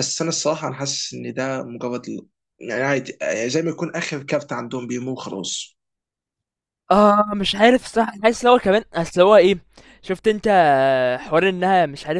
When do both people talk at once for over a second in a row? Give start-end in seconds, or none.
none